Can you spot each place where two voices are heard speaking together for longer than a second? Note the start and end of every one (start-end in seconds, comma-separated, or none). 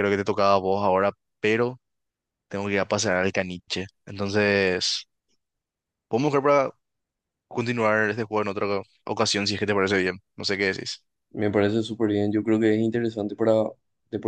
none